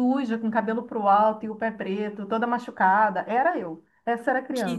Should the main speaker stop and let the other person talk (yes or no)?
yes